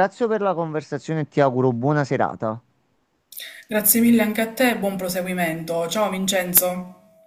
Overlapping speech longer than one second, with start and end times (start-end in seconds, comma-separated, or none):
none